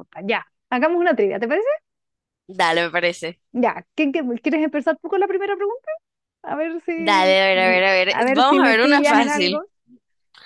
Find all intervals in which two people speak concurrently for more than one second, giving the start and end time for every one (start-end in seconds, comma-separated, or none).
8.1-9.6